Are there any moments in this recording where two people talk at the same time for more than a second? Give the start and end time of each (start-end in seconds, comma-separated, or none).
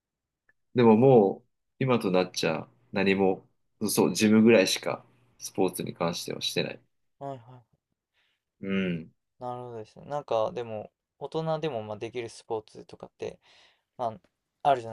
none